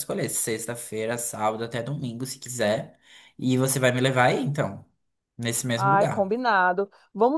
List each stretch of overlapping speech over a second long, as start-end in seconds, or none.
none